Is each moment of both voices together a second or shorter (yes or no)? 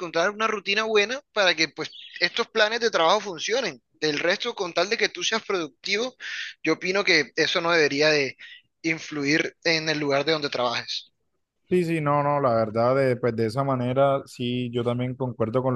yes